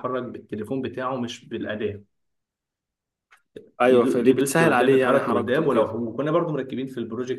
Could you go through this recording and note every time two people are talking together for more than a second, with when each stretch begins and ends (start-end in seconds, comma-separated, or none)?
3.8-5.9